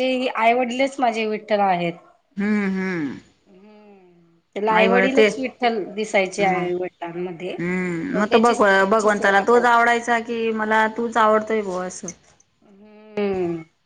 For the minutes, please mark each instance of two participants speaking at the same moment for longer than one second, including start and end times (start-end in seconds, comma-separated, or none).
8.2-9.9